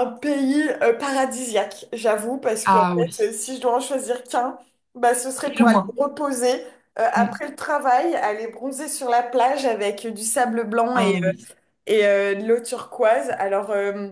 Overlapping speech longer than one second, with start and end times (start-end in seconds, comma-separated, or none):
none